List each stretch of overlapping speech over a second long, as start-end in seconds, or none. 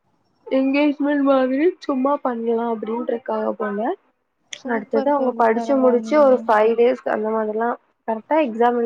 4.7-6.3